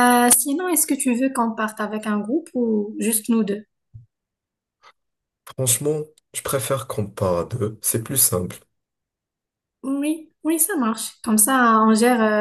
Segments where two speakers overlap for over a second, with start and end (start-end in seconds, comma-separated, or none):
none